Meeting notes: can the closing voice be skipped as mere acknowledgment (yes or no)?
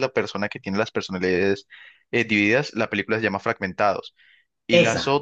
yes